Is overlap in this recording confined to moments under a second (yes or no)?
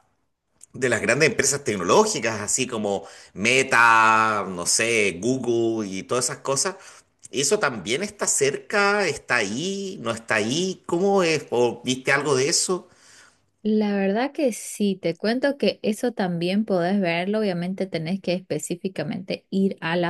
yes